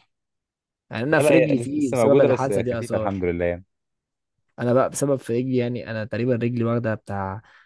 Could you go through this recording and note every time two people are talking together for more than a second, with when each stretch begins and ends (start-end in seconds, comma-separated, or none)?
1.1-3.2